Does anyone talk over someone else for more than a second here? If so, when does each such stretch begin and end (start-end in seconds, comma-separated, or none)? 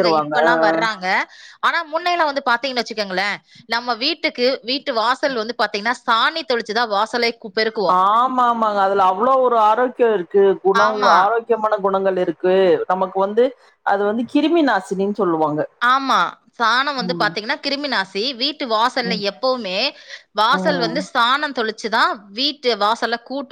none